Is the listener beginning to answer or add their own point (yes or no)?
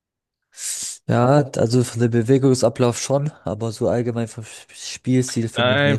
yes